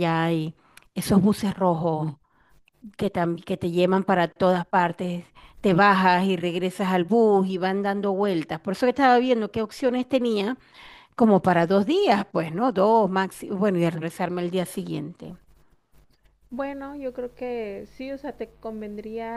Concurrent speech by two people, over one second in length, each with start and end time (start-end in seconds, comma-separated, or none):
none